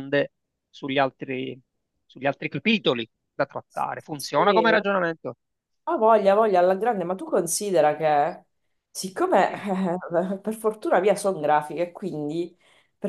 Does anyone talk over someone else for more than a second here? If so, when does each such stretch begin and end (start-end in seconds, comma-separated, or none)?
none